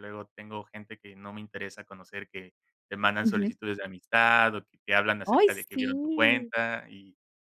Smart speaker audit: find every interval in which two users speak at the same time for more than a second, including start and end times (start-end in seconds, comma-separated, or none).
5.3-6.5